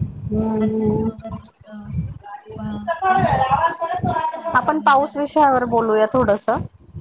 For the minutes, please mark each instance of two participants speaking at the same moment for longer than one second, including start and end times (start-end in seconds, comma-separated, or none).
4.6-6.1